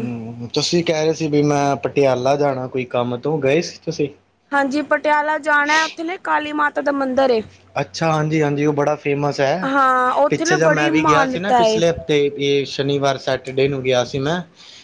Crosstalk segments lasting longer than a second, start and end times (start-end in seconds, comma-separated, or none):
10.3-11.8